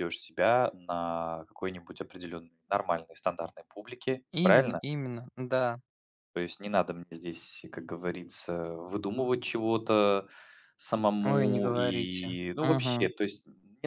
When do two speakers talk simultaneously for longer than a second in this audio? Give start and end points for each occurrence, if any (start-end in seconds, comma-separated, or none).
11.2-13.1